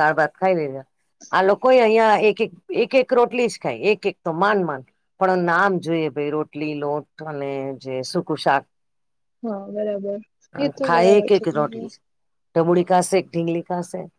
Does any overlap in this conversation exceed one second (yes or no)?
no